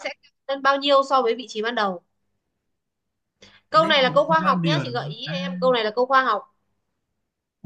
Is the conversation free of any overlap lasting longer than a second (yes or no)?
no